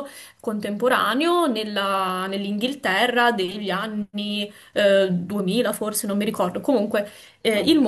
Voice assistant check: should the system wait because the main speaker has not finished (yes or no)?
yes